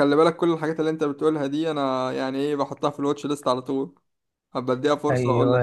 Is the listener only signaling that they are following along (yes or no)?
no